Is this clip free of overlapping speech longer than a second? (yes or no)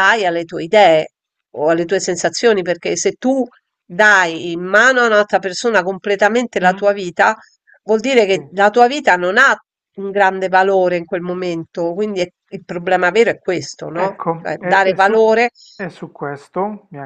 no